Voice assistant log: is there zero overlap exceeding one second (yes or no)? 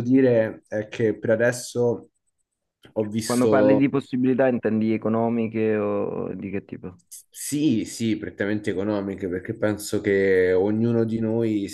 yes